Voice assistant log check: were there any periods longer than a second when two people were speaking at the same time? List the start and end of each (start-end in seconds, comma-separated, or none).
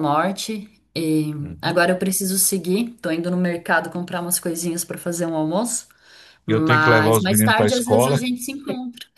6.5-8.2